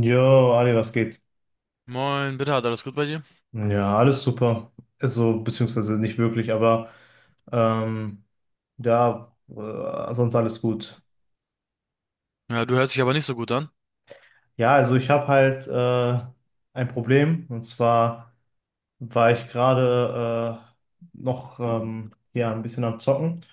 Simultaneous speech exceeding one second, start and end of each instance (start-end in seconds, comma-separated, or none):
none